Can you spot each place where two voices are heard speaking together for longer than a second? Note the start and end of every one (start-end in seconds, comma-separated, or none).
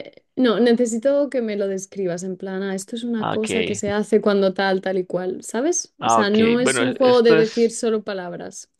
6.0-7.7